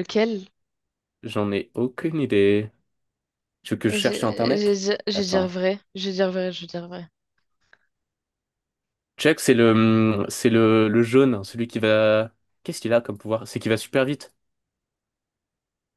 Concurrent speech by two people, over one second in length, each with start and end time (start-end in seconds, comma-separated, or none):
3.9-5.6